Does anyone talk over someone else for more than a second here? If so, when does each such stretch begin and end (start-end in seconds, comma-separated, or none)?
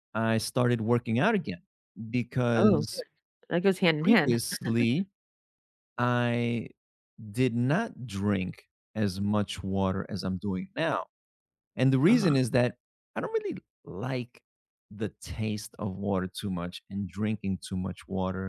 none